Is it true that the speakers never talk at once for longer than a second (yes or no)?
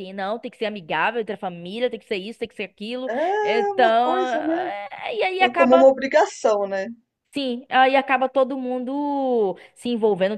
no